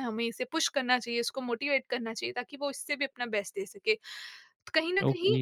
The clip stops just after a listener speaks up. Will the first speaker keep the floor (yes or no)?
yes